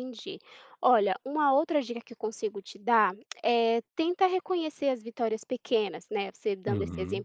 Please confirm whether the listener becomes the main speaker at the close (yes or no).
no